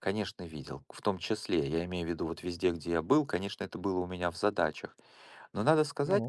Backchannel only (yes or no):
yes